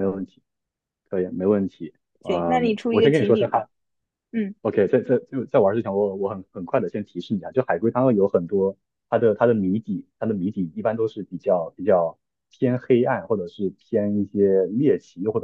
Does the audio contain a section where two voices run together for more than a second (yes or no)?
yes